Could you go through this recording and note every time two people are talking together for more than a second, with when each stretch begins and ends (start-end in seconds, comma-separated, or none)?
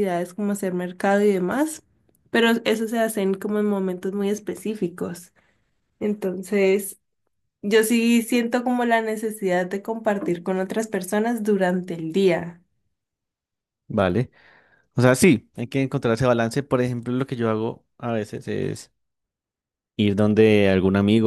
none